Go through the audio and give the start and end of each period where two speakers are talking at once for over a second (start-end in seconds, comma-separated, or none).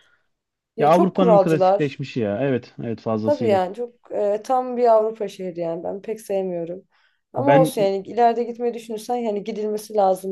0.8-2.0